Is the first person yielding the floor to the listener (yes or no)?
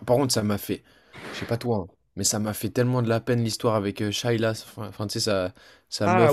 yes